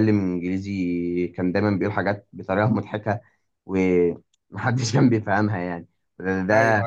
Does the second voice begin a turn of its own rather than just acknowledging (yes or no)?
no